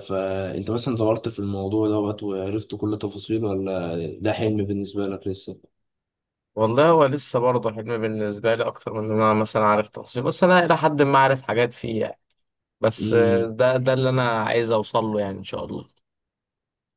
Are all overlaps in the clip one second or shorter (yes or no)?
yes